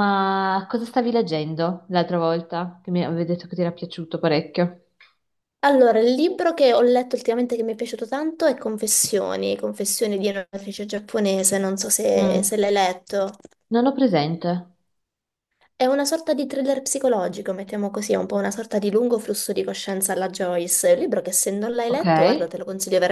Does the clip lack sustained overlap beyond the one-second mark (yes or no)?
yes